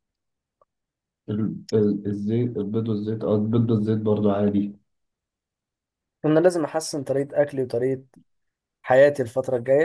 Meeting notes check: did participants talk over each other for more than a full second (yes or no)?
no